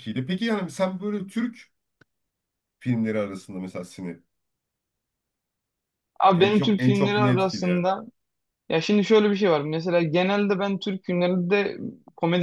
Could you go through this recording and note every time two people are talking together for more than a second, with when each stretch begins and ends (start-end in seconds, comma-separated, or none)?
6.3-7.9